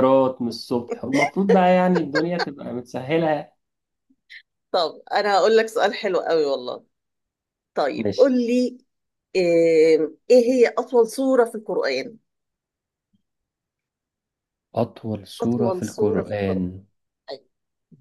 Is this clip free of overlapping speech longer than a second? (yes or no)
no